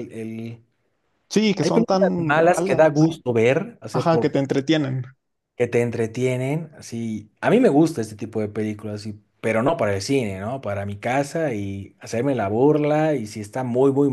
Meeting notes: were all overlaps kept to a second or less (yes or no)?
no